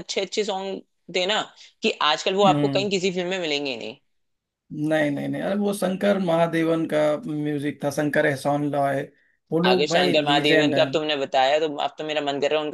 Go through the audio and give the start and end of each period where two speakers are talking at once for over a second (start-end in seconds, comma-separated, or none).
9.7-10.9